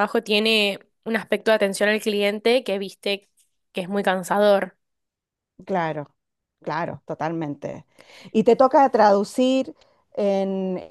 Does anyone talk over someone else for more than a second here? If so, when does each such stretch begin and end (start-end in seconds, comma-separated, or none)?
none